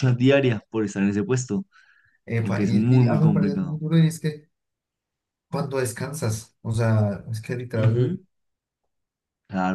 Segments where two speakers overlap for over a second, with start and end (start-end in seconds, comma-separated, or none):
2.4-3.8